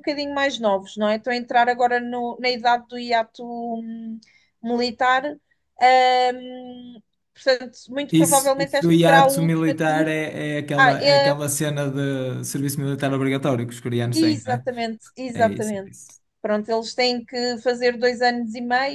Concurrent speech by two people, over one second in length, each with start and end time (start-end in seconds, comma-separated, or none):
8.1-10.1